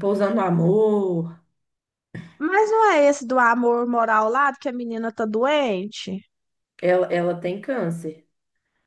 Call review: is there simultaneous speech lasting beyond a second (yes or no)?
no